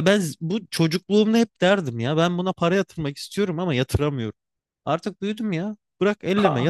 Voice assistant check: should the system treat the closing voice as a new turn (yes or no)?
yes